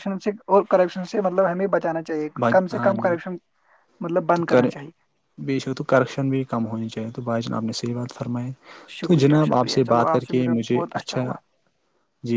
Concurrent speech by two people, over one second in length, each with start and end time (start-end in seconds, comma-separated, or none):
9.0-11.3